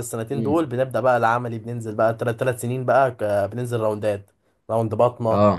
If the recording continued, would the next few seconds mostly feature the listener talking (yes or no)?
no